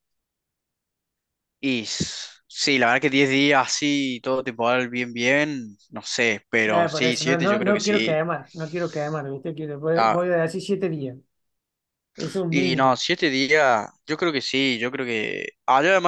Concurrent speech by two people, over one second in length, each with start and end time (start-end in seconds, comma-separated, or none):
6.7-8.2